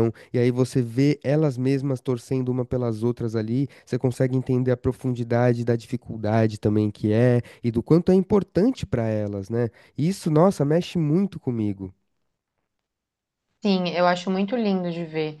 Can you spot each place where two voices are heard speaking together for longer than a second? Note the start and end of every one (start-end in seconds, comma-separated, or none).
none